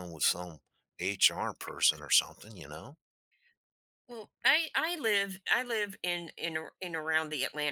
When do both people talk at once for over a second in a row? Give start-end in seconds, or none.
none